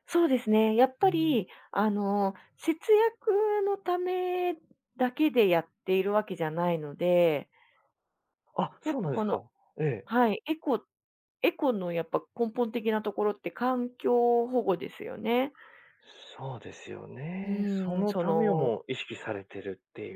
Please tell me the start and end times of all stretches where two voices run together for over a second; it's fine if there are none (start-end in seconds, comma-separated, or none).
17.4-18.7